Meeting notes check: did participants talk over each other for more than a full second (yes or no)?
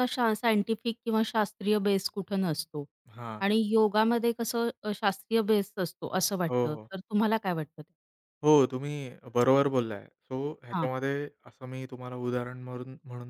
no